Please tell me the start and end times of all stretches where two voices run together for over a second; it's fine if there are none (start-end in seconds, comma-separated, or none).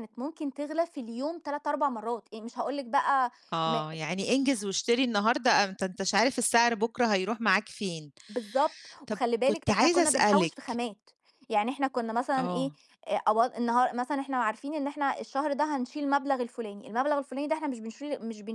9.1-10.8